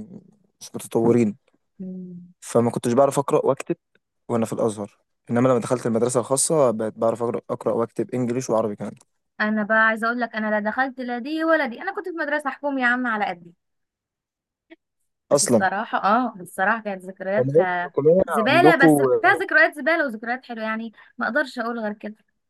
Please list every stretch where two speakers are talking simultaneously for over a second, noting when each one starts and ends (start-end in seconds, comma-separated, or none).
17.4-19.0